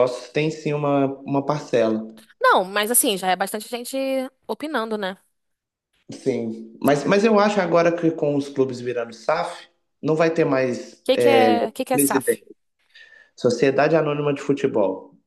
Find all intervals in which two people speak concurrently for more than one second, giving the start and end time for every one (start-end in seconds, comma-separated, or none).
none